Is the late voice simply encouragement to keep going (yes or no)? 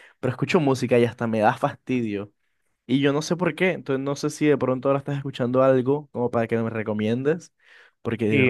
no